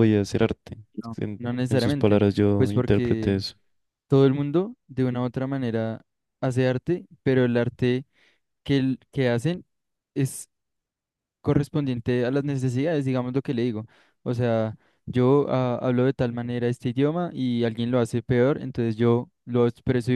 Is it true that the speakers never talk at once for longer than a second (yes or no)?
no